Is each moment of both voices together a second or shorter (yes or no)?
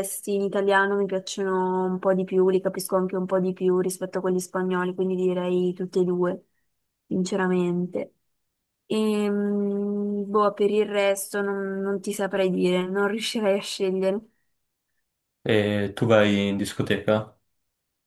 yes